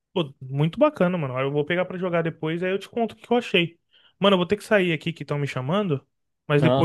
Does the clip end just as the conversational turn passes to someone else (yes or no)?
no